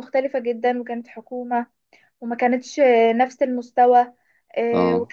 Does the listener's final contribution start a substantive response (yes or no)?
no